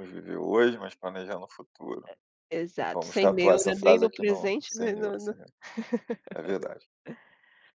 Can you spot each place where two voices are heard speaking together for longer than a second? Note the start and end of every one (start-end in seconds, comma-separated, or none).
2.9-5.3